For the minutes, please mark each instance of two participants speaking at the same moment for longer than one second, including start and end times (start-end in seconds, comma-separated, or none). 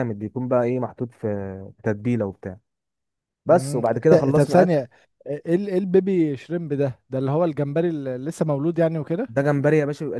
3.5-4.8